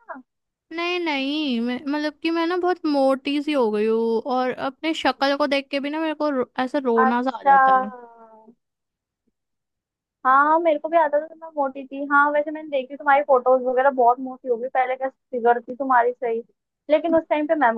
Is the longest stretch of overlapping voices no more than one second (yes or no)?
yes